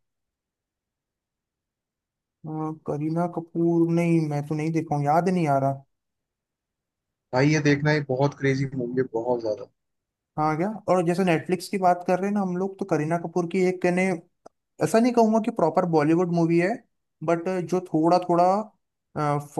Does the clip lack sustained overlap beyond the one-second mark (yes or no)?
yes